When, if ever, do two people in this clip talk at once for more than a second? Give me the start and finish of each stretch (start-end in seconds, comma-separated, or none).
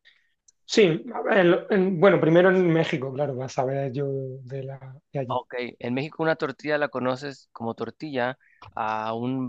none